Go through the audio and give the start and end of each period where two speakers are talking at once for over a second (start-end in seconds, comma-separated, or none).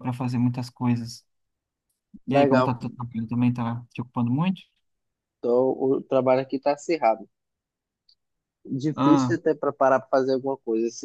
none